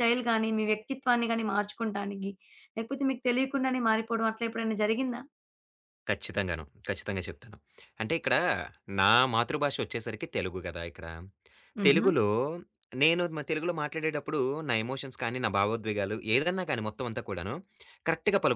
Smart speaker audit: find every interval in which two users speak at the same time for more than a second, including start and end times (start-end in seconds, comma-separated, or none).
none